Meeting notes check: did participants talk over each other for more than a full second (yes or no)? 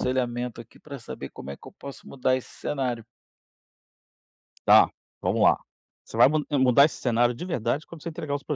no